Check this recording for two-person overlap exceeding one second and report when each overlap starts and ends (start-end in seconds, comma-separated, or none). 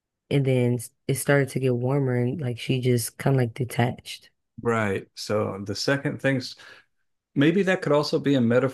none